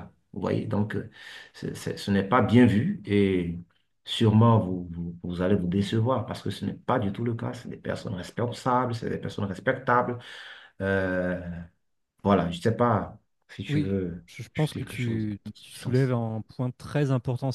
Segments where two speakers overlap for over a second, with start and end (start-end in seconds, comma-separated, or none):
13.7-16.1